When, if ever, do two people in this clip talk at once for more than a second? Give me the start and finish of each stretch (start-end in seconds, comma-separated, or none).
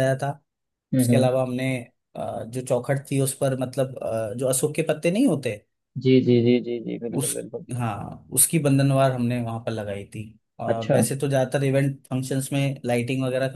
none